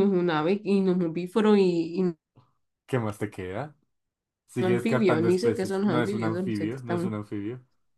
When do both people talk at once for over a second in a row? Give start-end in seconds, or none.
4.6-7.1